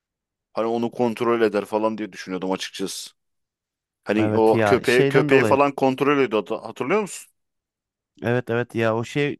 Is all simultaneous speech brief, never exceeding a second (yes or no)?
no